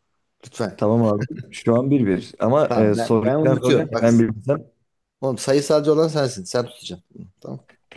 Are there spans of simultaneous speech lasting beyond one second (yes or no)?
yes